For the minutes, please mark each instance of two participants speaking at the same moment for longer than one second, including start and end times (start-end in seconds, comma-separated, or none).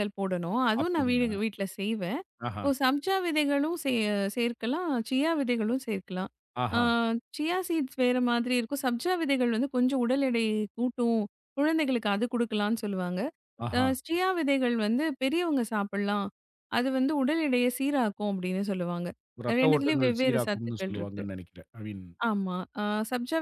19.6-21.2